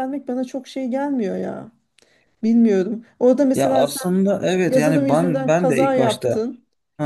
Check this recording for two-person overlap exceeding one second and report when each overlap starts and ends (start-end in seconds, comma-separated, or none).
4.7-6.5